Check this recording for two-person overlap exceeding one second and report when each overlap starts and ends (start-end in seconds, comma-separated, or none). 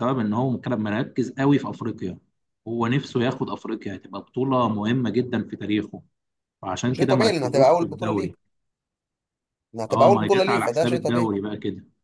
6.9-8.3, 9.9-11.3